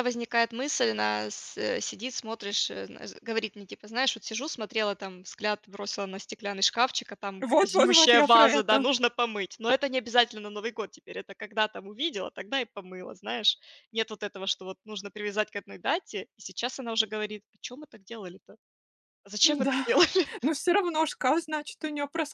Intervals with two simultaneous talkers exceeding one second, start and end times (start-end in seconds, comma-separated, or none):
7.4-8.8